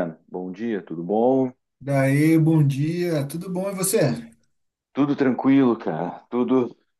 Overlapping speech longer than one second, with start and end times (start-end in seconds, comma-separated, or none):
none